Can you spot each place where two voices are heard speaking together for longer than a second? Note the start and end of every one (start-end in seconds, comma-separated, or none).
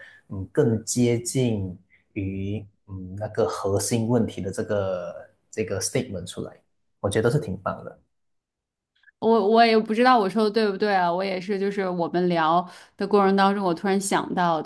none